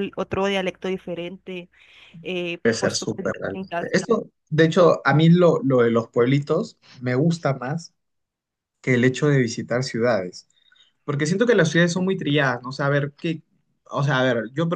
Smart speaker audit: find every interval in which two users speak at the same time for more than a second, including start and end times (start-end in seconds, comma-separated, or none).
2.6-4.0